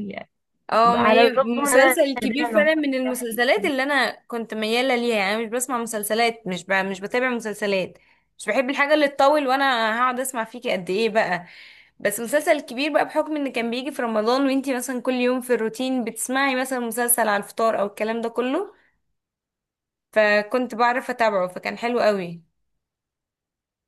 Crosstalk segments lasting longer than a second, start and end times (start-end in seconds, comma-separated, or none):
0.8-2.9